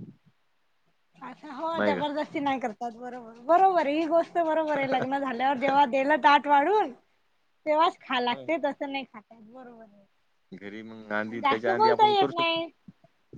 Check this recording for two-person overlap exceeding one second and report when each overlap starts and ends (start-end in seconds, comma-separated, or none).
11.3-12.6